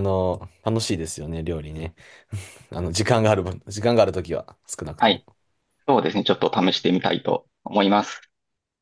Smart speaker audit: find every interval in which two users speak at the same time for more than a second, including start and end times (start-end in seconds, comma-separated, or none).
none